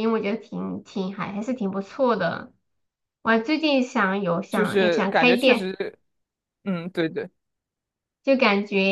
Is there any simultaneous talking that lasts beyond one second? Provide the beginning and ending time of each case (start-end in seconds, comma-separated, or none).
4.5-5.7